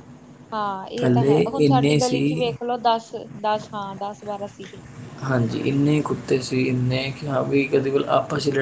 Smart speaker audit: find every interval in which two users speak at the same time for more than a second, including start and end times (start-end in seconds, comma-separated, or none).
1.0-2.5